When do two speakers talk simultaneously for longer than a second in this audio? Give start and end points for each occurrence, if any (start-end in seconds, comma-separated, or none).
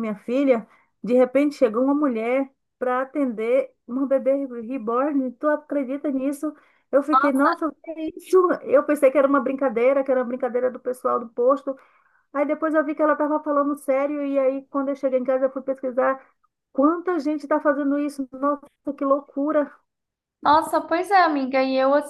none